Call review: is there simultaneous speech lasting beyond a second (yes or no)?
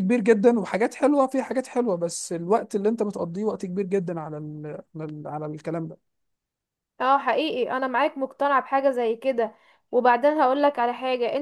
no